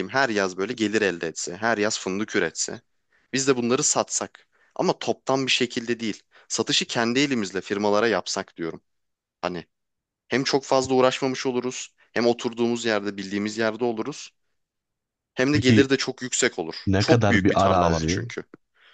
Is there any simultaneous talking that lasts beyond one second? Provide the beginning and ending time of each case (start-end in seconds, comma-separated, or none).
16.9-18.3